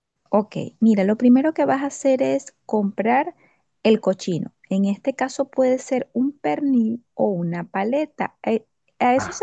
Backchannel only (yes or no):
yes